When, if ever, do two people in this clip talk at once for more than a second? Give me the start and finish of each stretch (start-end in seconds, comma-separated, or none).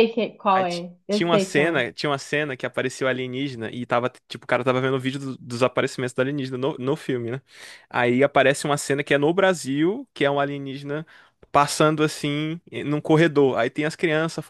0.5-1.8